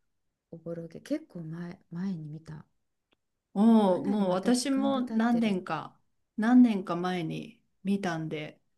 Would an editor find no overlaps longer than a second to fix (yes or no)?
no